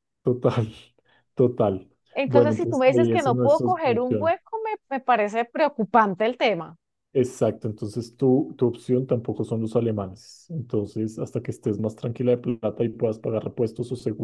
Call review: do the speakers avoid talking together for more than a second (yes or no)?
no